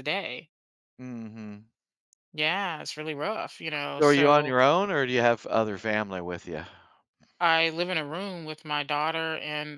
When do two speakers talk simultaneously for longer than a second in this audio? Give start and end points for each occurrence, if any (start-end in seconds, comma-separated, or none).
none